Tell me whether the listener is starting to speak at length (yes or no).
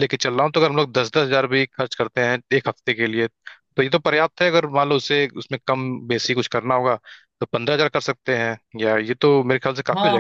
yes